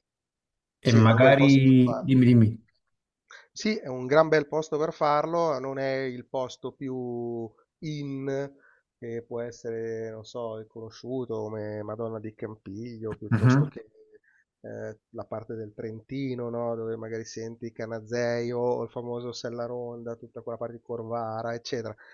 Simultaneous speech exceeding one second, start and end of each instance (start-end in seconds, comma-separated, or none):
0.9-2.1